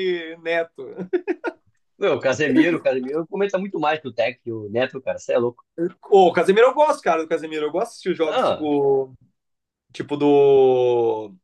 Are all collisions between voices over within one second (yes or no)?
yes